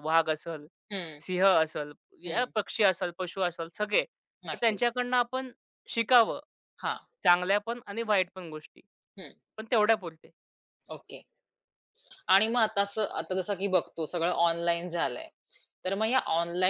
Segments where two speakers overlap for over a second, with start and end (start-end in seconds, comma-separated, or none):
none